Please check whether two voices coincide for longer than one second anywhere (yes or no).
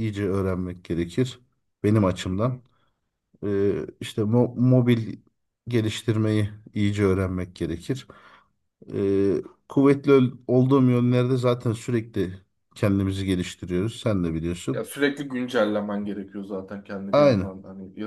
no